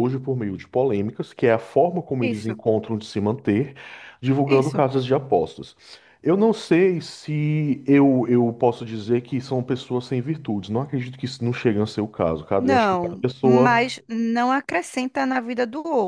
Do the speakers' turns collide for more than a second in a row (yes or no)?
yes